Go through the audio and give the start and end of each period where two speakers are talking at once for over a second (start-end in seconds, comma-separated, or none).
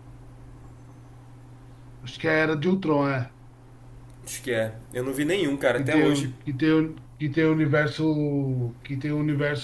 none